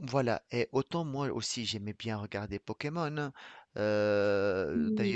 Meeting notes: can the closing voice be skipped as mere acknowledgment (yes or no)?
yes